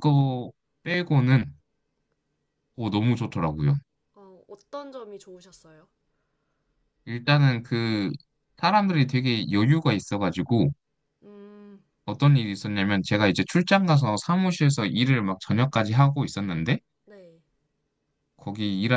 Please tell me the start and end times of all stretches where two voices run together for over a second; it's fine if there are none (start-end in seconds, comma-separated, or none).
none